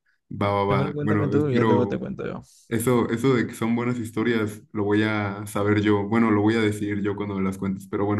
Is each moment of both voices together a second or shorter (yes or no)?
no